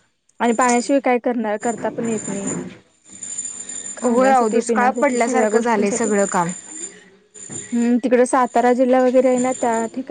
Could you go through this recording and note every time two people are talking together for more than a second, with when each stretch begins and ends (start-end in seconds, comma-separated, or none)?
4.0-6.1